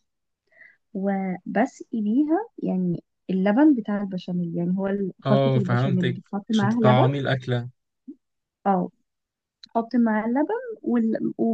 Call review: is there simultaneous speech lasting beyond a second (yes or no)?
yes